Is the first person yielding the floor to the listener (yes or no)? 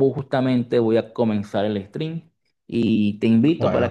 no